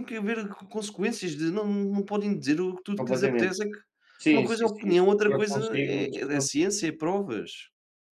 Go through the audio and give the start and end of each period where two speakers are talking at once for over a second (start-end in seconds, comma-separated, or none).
4.3-6.4